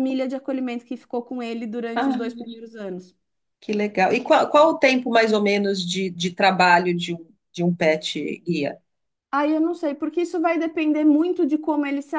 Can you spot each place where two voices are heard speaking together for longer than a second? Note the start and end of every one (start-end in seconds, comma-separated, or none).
none